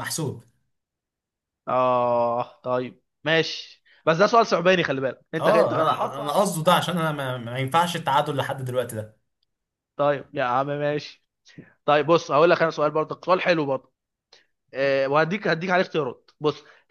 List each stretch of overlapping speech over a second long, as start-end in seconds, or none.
5.4-6.9